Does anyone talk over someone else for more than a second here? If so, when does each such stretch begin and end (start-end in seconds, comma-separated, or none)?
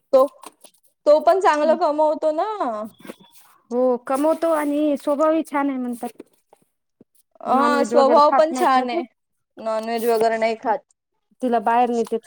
7.5-9.0